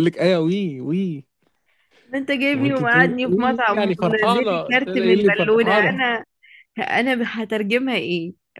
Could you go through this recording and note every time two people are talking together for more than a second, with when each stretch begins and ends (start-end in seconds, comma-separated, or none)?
2.5-6.0